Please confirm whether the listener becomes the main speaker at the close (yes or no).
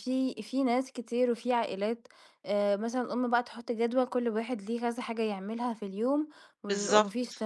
no